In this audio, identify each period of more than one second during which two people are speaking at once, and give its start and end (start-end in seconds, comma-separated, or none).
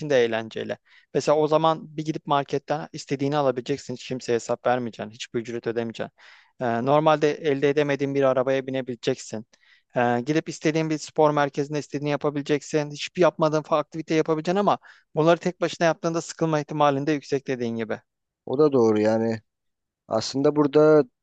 none